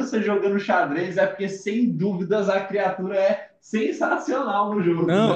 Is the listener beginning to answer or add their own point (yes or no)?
yes